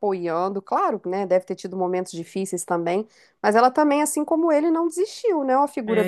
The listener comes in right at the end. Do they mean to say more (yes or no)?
yes